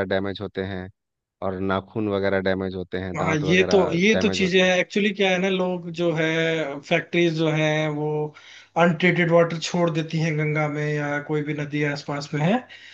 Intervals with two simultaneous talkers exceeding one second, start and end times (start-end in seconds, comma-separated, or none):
3.2-4.7